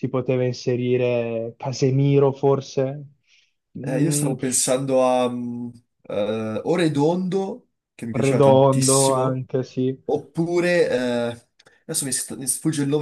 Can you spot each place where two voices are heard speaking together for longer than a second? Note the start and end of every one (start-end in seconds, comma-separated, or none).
8.1-9.4